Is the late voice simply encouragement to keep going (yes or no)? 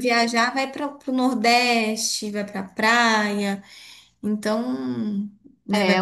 no